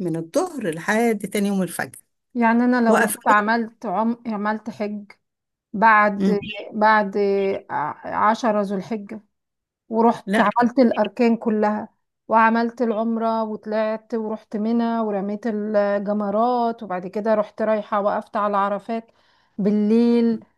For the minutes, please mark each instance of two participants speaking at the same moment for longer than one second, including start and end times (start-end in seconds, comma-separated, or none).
none